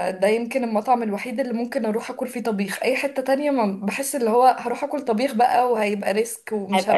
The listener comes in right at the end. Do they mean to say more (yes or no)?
yes